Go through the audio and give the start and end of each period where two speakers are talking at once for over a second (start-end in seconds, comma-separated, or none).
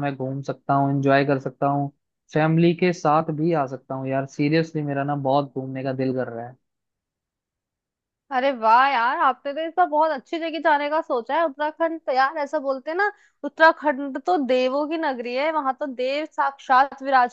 none